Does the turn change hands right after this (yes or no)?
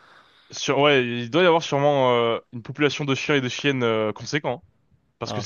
no